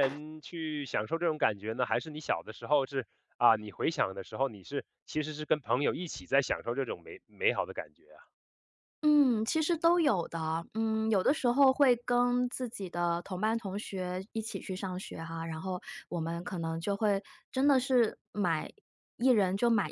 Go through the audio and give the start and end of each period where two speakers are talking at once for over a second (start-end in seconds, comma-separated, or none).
none